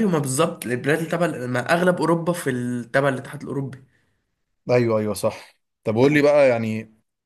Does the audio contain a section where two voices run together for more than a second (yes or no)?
no